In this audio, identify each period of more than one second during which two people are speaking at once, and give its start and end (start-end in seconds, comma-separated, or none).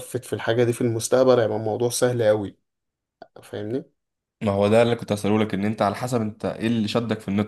none